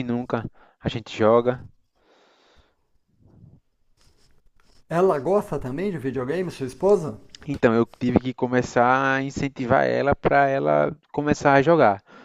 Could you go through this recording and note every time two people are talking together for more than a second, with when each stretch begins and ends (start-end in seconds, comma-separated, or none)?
none